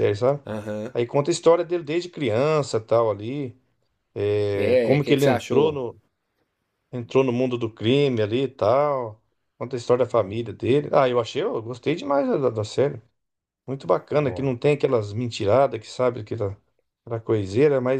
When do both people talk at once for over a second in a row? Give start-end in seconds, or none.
4.5-5.8